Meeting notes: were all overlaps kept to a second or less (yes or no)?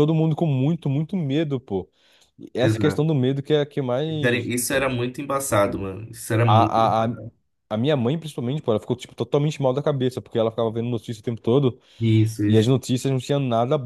yes